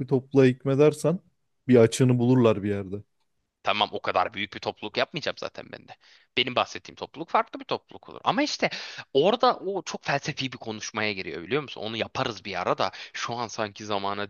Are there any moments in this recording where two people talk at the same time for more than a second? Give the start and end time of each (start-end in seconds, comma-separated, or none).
none